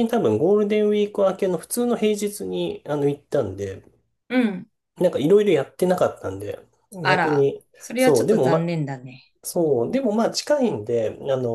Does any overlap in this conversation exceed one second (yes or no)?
yes